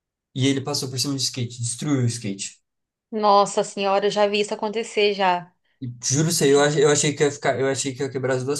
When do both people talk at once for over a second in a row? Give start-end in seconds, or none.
none